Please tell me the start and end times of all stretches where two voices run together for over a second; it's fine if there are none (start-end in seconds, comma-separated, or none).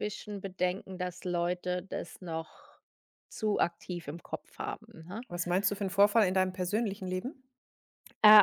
none